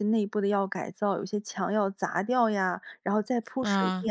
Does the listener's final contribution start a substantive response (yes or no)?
no